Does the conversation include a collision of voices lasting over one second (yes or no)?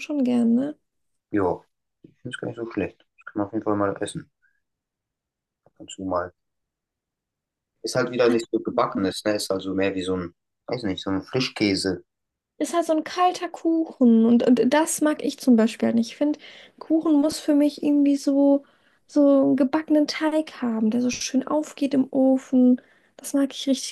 no